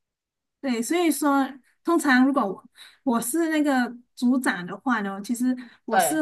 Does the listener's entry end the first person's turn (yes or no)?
no